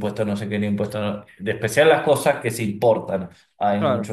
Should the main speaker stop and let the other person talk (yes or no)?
no